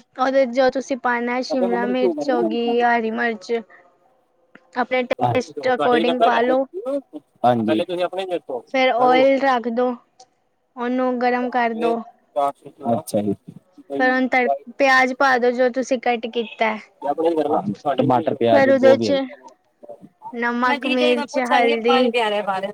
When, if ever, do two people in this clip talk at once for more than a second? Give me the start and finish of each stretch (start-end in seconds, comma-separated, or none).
20.7-22.1